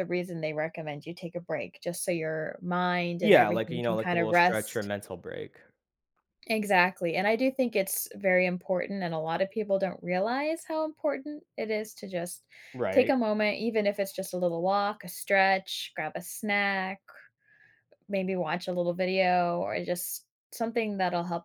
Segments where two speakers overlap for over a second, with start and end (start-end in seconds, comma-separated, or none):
3.2-4.9